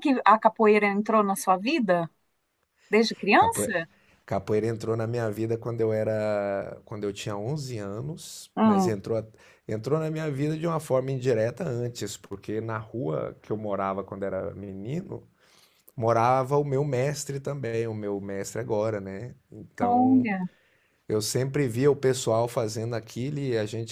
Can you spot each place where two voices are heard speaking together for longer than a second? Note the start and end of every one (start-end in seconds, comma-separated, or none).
none